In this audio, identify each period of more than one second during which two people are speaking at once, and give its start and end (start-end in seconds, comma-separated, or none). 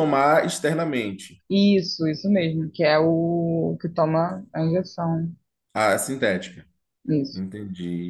none